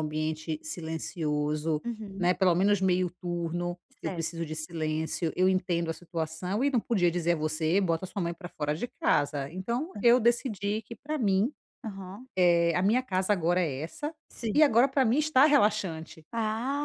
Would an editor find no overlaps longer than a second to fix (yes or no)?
yes